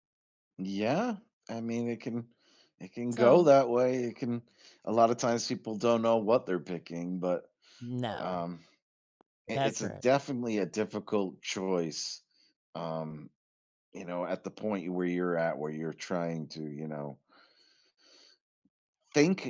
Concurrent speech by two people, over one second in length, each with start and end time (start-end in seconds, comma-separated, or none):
none